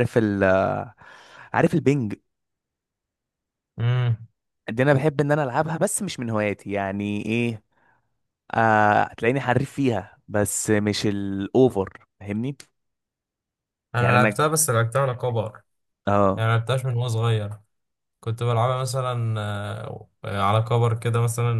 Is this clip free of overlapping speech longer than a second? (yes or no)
yes